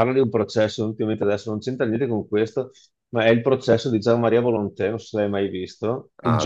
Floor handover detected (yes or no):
no